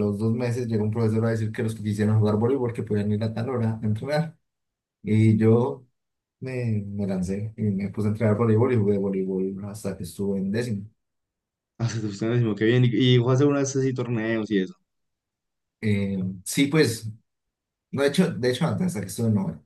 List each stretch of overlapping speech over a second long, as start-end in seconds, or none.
none